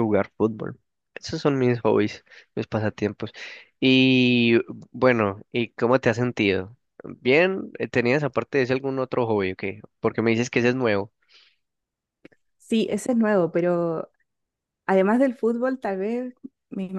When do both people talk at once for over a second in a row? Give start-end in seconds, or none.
none